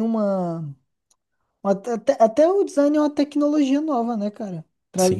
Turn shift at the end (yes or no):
yes